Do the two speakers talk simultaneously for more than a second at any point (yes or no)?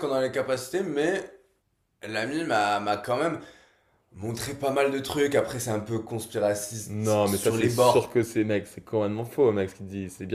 yes